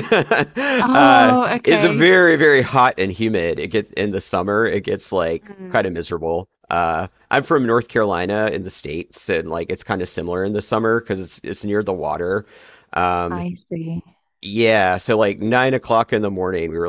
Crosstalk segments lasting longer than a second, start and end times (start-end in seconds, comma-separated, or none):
0.8-2.1